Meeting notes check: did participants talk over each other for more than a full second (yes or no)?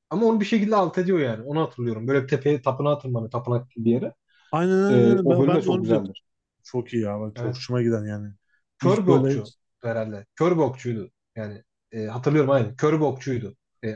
yes